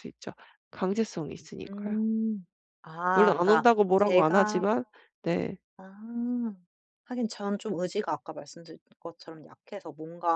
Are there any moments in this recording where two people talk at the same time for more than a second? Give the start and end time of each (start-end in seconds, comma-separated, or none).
3.1-4.6